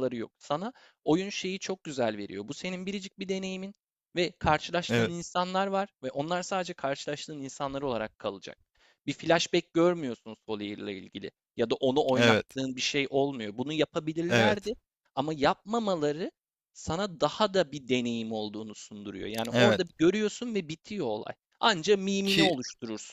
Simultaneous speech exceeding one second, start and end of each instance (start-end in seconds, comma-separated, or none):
none